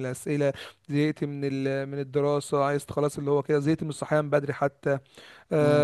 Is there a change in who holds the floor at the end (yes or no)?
no